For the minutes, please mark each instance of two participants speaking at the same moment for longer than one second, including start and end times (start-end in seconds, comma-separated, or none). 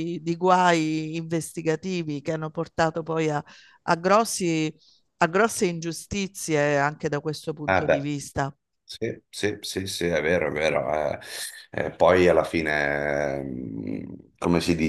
none